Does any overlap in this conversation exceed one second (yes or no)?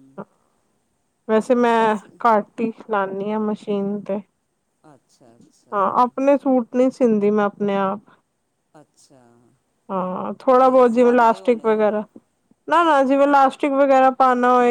yes